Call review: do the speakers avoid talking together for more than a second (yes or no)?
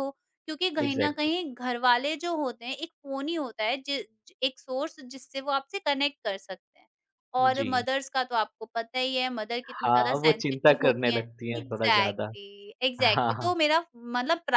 no